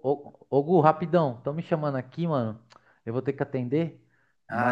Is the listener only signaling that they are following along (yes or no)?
yes